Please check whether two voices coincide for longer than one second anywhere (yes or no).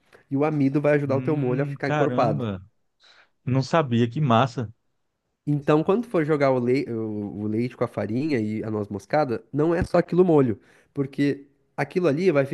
yes